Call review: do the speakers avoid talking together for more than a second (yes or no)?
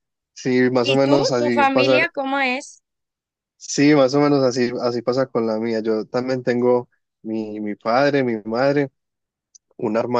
no